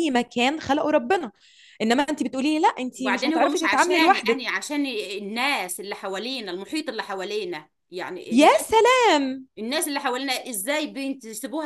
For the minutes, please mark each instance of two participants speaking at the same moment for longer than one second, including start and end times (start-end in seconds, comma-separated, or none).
3.0-4.4